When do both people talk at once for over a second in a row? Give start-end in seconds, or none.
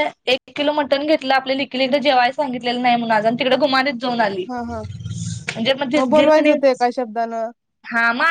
none